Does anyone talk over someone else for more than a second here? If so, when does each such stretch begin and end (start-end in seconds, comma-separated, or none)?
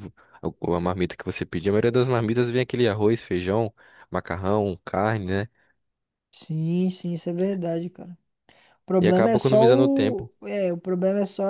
9.0-10.3